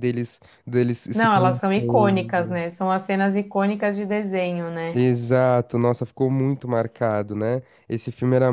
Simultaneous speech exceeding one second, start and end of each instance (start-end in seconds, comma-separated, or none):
1.1-2.6